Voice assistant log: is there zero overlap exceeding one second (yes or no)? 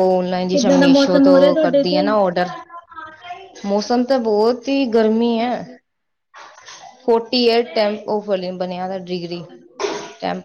no